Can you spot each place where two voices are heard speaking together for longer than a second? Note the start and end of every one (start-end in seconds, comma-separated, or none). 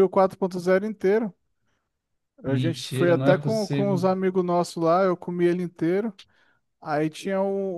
2.4-4.0